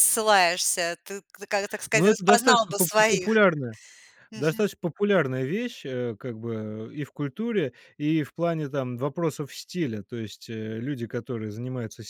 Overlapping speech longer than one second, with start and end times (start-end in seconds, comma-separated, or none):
1.9-3.3